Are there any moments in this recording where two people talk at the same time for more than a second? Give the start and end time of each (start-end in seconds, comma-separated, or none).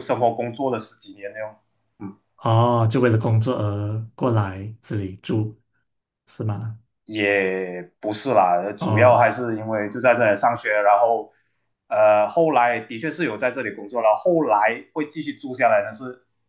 none